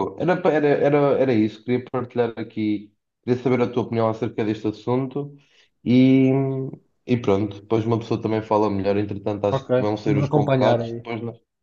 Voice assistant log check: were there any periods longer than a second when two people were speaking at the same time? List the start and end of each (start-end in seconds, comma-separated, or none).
9.5-11.1